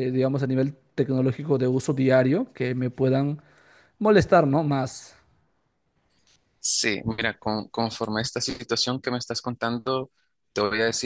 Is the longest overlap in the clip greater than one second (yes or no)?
no